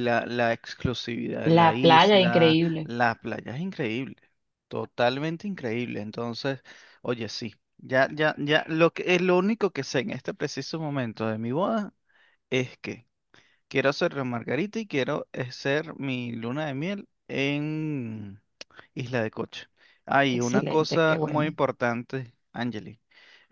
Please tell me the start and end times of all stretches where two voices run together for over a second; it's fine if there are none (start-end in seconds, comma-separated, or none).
1.4-2.9, 20.3-21.6